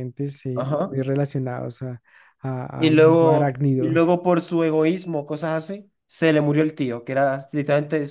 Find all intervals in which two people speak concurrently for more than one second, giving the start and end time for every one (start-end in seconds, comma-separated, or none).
2.8-4.0